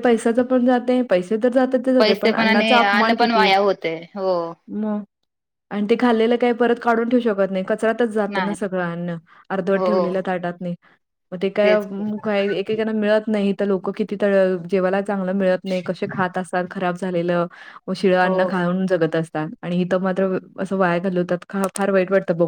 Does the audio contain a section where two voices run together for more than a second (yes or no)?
yes